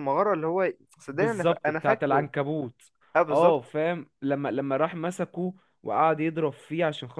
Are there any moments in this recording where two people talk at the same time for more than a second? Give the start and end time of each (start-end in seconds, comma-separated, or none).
1.1-2.3